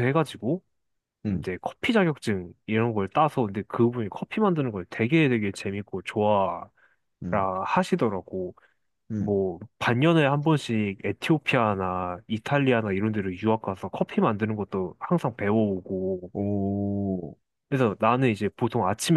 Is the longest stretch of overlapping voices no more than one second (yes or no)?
yes